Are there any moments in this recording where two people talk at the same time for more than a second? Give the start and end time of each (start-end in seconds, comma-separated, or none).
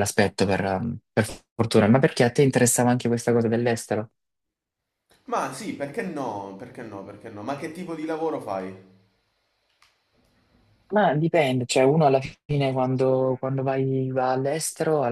none